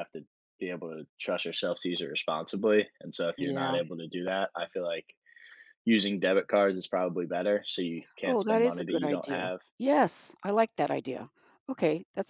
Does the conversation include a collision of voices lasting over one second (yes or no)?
yes